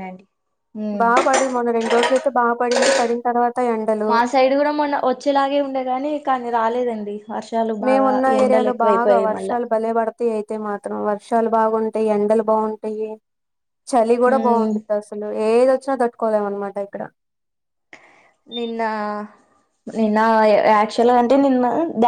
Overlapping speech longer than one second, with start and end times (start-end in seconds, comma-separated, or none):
7.8-9.6